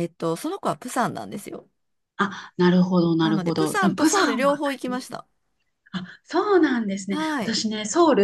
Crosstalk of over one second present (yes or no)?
yes